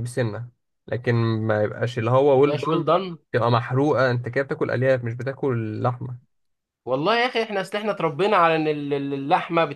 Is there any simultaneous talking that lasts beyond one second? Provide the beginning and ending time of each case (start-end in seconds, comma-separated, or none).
none